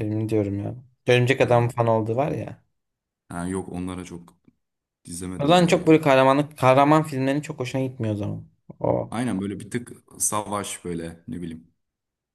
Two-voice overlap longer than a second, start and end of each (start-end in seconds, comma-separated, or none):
none